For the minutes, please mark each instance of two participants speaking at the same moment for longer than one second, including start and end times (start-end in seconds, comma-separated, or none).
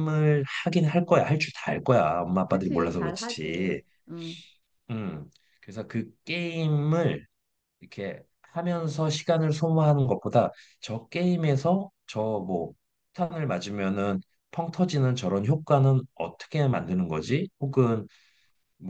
2.5-3.8